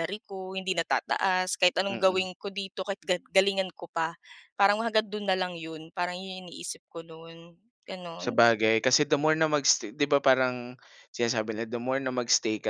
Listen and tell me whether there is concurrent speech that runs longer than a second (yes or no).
no